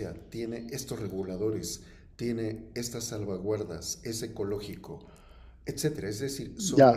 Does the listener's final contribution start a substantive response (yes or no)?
no